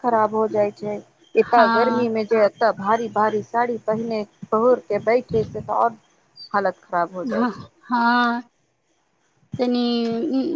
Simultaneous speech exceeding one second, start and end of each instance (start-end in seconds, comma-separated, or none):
none